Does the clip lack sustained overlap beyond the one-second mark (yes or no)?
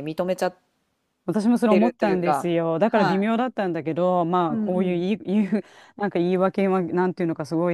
no